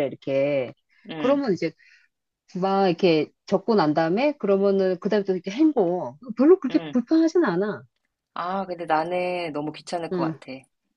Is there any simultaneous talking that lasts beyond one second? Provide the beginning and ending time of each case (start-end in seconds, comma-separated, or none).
none